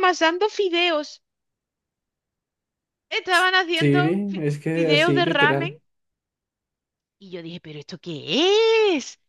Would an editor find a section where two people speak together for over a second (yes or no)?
yes